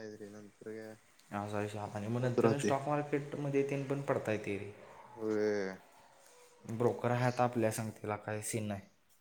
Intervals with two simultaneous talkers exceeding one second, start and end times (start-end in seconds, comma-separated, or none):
none